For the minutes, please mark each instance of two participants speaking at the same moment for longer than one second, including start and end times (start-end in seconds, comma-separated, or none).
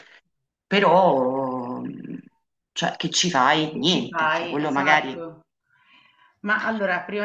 3.7-5.2